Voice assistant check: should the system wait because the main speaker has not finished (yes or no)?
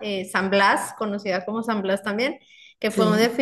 yes